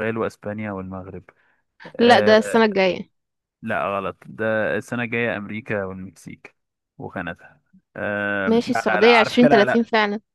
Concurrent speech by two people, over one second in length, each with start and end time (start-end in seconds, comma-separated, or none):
8.5-9.8